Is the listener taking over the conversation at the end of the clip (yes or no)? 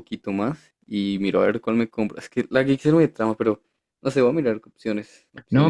yes